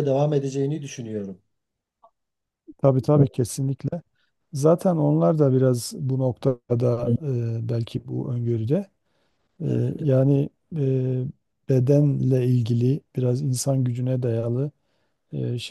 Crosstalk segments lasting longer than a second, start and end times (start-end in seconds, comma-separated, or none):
none